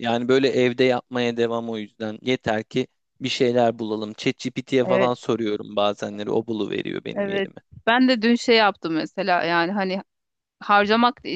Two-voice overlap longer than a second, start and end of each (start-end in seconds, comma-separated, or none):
none